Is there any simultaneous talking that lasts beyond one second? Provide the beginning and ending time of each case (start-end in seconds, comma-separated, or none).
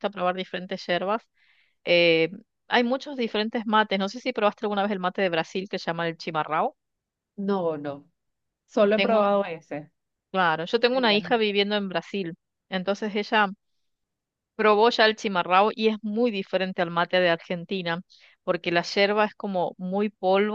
none